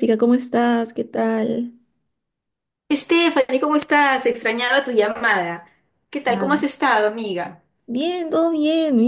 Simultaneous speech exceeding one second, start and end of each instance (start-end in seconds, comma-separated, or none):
none